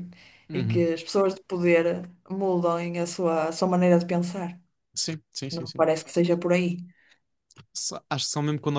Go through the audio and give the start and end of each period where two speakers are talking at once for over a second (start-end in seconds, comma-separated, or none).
none